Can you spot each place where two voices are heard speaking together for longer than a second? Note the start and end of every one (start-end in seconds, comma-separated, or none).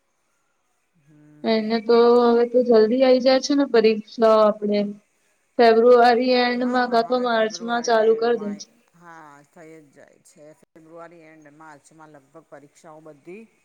6.6-8.6